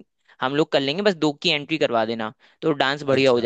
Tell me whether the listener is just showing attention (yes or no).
yes